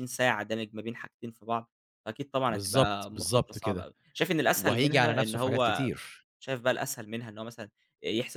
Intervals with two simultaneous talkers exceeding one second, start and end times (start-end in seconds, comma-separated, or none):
2.5-3.9, 4.5-5.9